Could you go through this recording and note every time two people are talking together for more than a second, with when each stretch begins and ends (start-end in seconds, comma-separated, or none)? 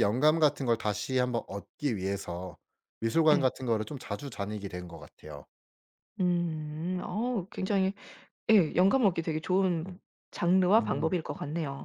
none